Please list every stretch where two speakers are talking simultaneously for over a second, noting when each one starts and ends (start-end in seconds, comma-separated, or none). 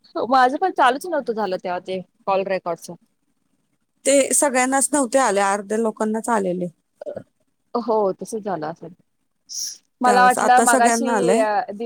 10.0-11.4